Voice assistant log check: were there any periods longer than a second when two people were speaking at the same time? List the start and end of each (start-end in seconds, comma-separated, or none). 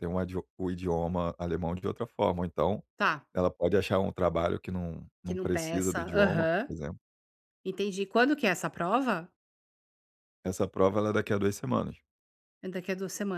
5.2-6.7